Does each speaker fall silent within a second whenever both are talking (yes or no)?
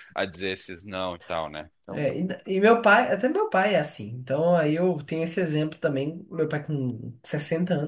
yes